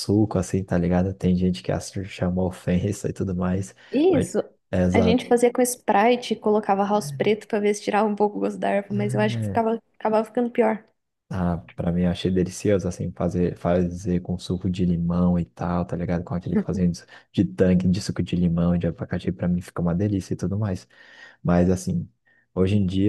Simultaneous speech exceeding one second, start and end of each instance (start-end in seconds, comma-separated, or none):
none